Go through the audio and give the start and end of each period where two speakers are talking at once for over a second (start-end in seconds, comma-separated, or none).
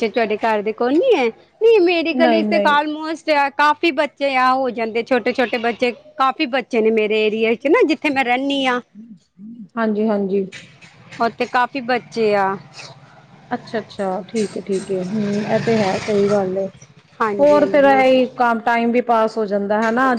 none